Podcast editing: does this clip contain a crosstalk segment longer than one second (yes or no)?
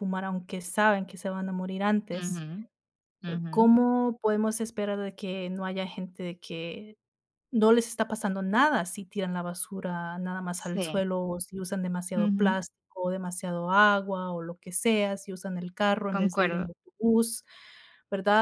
no